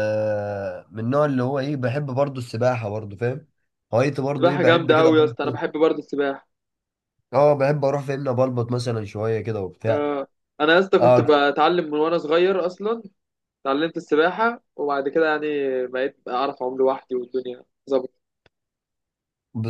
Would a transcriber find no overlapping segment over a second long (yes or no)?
no